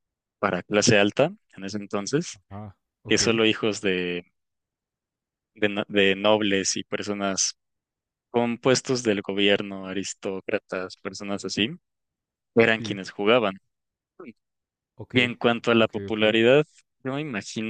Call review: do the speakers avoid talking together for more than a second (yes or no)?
yes